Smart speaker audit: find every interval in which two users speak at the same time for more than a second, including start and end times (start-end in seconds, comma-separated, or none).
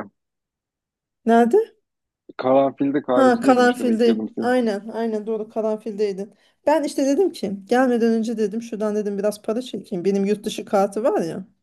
3.1-4.5